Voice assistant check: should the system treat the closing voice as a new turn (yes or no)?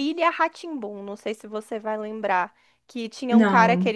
no